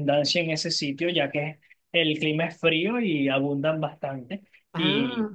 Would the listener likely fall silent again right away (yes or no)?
yes